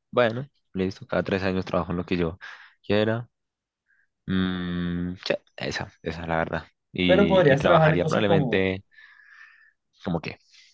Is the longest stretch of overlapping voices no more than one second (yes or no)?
no